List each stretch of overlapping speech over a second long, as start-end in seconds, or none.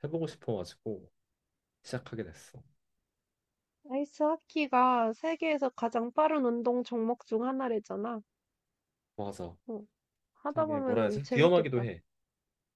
10.5-11.9